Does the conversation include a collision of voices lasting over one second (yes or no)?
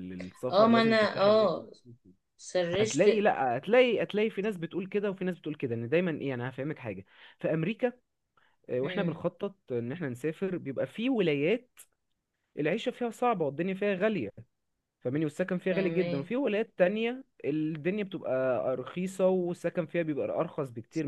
yes